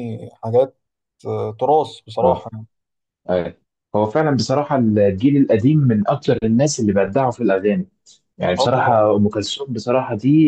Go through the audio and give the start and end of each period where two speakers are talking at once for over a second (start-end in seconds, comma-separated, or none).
none